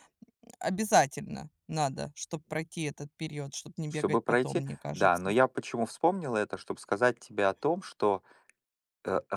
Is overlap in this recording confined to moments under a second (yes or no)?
no